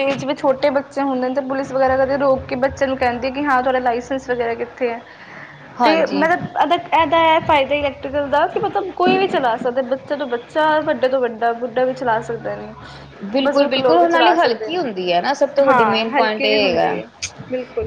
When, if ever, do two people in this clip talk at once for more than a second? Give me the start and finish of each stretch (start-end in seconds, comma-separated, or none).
13.4-14.8, 15.7-17.0